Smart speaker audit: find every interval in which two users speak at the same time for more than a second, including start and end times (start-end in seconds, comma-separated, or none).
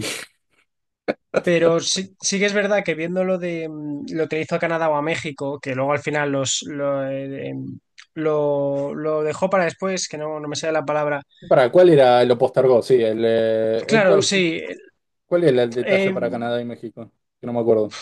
none